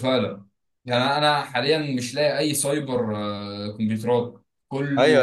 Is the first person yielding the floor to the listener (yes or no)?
yes